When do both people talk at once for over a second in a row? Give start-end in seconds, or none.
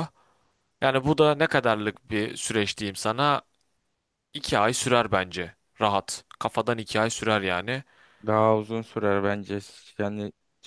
none